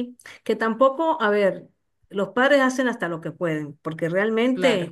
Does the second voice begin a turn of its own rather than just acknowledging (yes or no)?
no